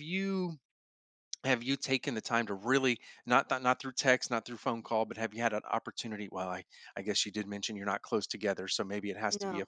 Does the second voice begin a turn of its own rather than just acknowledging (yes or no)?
no